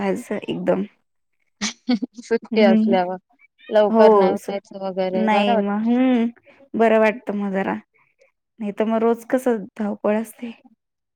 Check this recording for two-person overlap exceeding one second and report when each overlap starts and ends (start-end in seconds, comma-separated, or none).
3.9-5.7